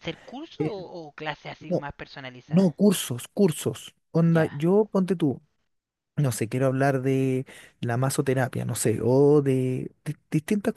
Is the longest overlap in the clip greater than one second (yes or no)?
no